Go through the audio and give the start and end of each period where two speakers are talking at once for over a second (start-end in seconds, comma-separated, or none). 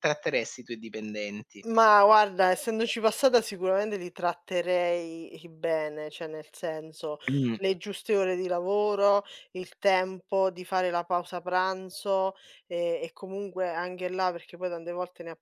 none